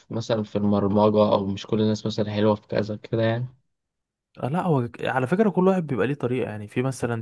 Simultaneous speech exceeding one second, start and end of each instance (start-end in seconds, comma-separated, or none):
none